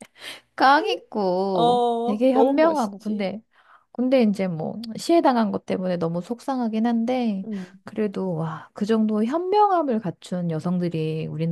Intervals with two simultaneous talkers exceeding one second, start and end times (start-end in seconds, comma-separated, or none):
1.5-3.3